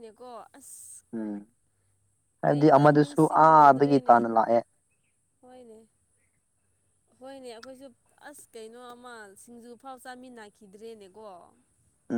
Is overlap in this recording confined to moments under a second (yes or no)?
no